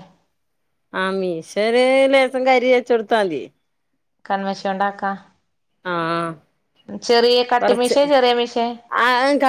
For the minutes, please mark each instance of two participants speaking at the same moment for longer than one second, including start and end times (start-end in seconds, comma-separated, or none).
none